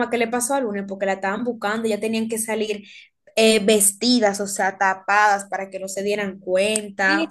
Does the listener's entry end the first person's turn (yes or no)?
yes